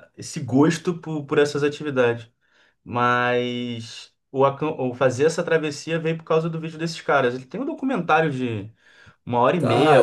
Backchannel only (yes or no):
no